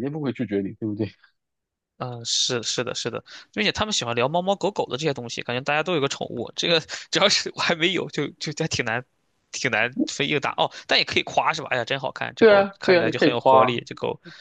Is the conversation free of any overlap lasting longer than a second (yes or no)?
no